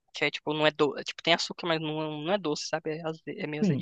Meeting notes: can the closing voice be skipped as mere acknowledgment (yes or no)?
no